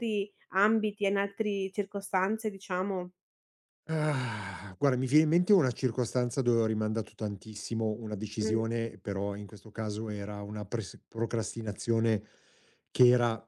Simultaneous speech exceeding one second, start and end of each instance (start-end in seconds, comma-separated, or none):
none